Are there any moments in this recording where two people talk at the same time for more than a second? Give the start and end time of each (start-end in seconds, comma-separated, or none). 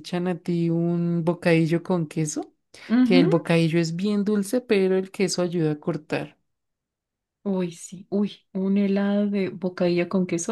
none